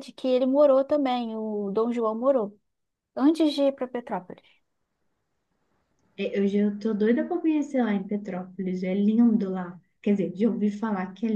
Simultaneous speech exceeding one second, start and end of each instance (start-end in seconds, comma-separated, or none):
none